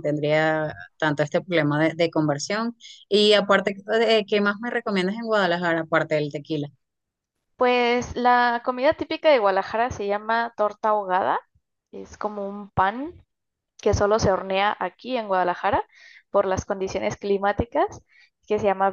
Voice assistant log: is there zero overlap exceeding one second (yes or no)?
yes